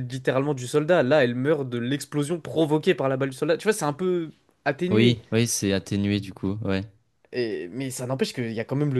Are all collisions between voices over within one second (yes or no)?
yes